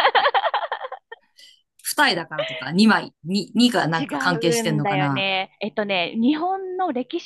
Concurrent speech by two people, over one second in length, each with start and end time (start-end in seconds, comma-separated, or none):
4.0-5.3